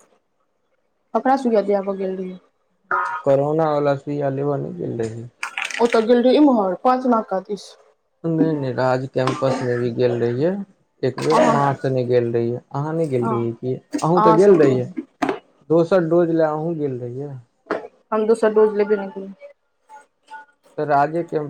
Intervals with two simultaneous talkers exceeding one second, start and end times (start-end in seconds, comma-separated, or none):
none